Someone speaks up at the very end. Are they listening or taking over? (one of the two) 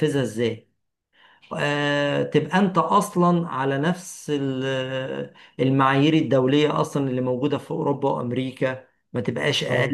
taking over